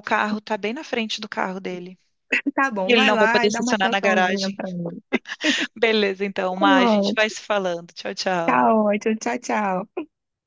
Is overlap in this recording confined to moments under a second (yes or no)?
no